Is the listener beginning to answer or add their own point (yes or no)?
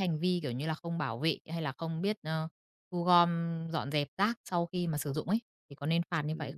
yes